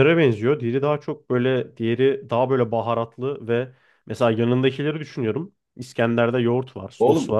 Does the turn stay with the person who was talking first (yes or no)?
no